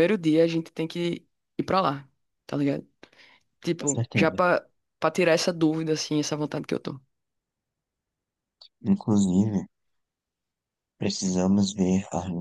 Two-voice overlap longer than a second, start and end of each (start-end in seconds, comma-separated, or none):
none